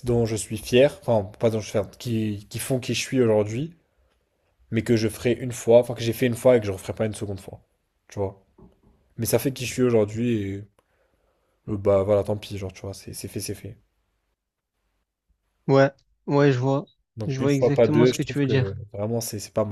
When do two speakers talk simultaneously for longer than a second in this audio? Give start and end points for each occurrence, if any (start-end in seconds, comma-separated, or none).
17.2-18.8